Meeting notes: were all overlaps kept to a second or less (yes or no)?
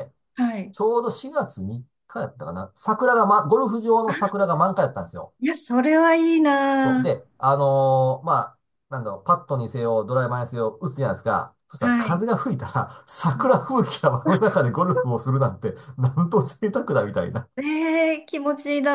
yes